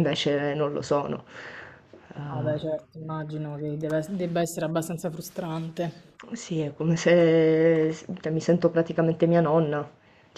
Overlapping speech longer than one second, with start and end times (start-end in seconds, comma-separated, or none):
none